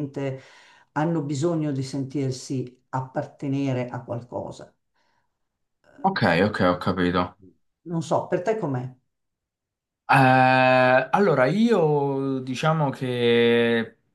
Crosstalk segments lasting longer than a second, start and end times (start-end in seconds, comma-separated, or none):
none